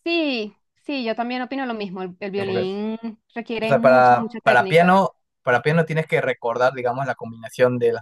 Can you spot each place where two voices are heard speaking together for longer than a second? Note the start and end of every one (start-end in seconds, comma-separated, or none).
3.6-5.0